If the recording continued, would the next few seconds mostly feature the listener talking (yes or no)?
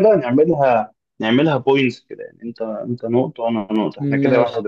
yes